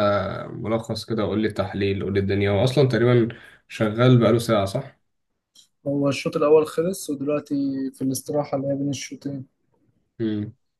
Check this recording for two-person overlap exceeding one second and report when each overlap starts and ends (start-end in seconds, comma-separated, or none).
none